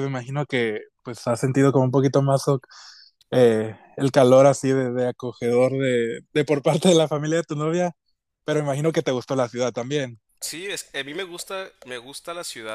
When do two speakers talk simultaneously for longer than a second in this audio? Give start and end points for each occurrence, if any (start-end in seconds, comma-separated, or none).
none